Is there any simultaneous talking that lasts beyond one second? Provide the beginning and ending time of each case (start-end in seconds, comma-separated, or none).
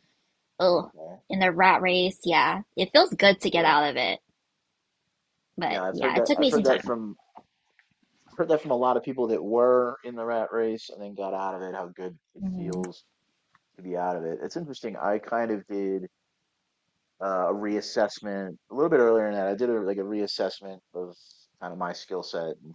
5.7-7.0